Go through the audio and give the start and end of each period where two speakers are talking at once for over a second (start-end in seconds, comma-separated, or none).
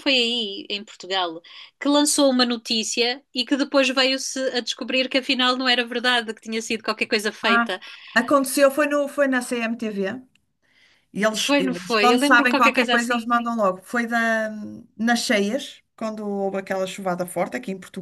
11.4-13.3